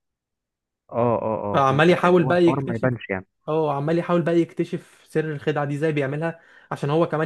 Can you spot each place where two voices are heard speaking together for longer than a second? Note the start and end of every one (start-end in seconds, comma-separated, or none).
1.5-2.9